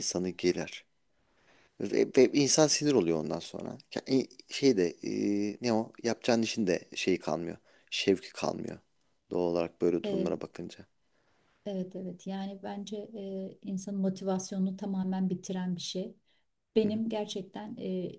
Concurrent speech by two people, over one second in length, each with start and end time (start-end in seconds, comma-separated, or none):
none